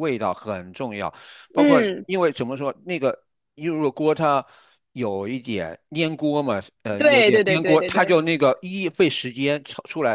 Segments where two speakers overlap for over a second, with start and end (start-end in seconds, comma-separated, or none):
7.0-8.2